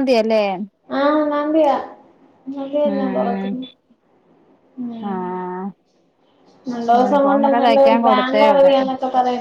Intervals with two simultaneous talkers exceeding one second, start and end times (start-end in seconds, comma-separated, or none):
7.0-8.7